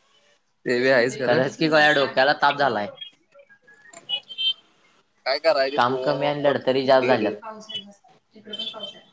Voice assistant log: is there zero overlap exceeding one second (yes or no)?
no